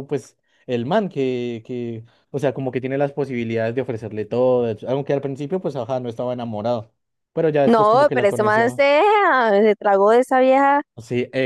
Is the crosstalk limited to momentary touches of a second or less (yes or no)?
no